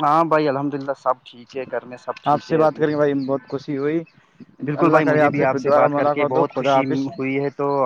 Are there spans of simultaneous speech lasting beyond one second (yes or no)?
yes